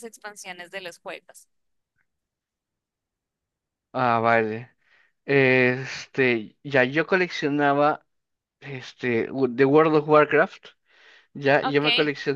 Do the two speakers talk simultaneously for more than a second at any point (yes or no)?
no